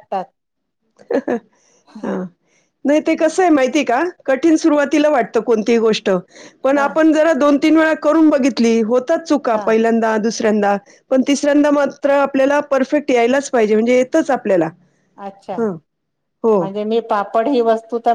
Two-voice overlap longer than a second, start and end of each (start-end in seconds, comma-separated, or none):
none